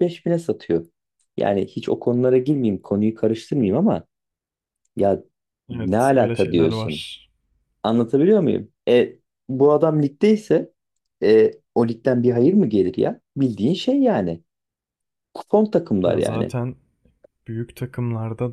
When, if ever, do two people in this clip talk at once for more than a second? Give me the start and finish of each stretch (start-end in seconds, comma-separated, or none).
5.7-7.0